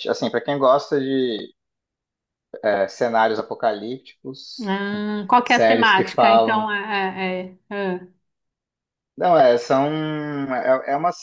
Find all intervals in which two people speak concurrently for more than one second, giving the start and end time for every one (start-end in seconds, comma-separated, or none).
5.4-6.7